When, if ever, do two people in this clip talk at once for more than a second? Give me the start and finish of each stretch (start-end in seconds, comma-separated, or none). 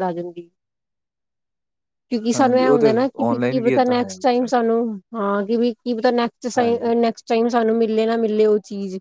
2.3-4.5